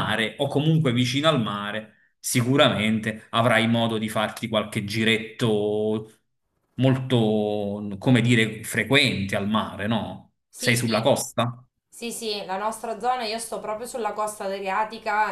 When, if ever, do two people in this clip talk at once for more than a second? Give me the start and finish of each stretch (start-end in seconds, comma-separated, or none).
none